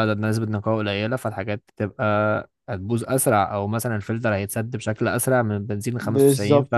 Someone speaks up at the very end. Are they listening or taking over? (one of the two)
taking over